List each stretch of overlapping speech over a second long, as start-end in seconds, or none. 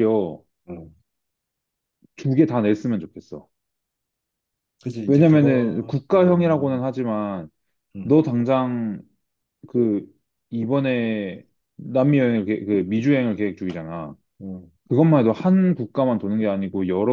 5.1-6.8